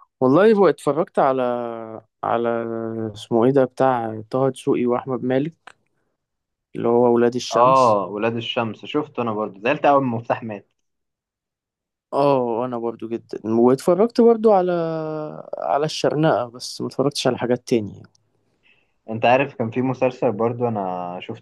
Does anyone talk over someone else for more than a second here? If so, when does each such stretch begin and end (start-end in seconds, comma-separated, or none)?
none